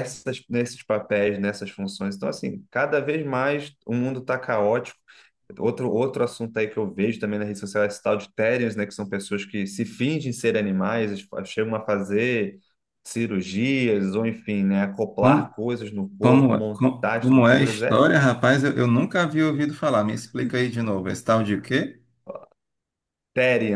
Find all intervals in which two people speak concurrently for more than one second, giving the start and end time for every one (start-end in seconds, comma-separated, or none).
16.2-18.1